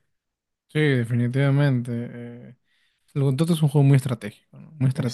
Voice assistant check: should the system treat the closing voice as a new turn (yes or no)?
no